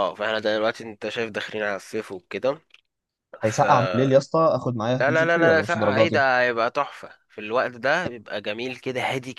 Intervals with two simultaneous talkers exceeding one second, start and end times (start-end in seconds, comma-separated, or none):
5.0-6.2